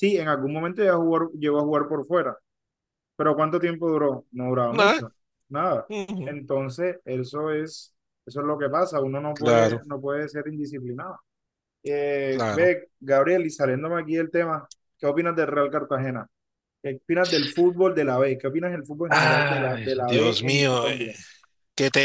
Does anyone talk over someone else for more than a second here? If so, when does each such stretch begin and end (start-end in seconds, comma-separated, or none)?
19.1-21.0